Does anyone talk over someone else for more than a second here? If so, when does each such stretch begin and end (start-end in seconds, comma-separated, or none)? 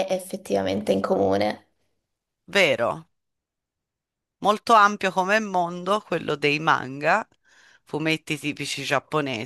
none